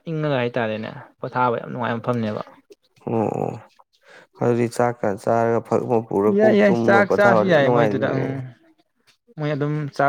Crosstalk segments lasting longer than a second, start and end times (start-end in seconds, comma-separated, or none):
6.4-8.3